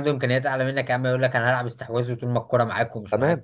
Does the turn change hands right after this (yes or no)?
yes